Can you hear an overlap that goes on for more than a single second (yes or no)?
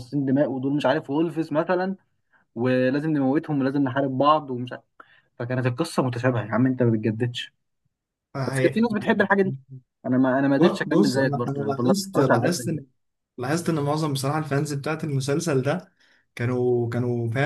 yes